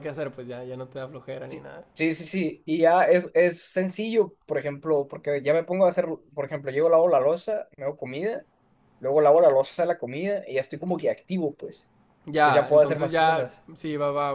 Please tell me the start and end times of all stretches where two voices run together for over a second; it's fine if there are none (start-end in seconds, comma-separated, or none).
12.3-13.7